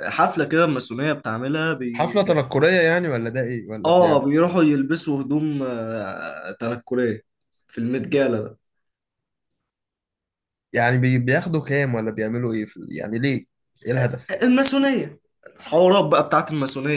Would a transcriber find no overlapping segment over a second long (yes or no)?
yes